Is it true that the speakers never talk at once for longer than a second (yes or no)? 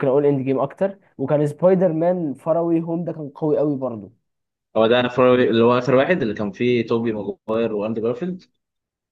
yes